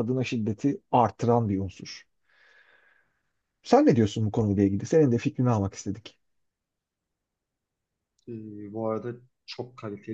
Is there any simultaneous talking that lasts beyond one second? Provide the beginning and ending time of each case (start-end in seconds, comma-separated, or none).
none